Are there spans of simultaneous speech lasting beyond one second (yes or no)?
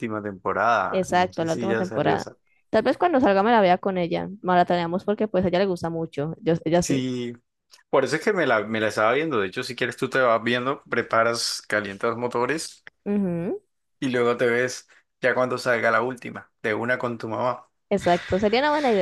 yes